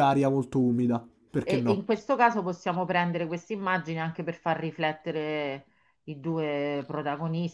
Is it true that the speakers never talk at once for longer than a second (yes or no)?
yes